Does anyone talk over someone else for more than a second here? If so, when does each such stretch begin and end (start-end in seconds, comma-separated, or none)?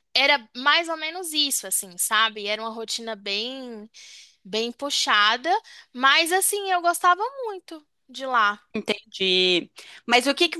none